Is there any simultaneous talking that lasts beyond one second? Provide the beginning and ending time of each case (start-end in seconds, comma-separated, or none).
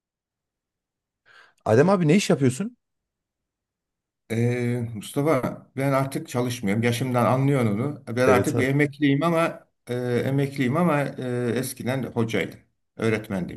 none